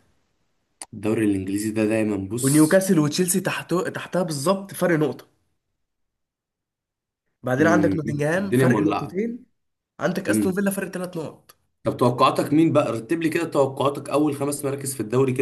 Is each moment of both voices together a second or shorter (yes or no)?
no